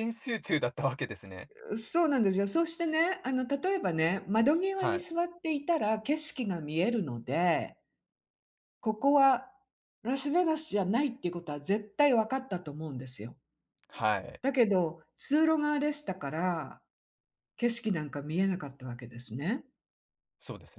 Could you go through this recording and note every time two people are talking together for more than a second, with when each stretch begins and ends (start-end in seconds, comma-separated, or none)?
none